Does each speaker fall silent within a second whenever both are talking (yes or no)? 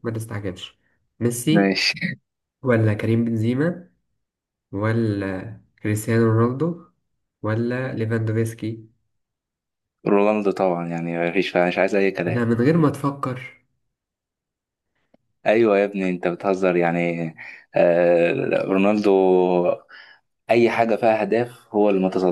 yes